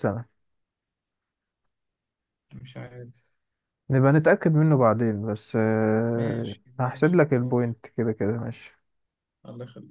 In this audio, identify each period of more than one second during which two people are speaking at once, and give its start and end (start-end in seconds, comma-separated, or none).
6.1-7.7